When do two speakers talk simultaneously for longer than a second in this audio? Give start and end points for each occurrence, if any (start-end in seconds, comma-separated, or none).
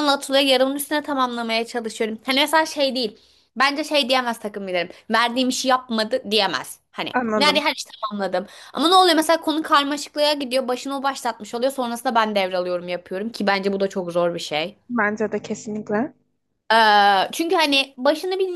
none